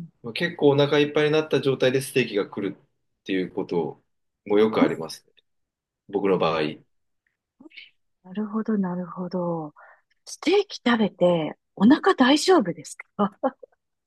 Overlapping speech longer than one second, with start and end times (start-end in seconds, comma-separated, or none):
none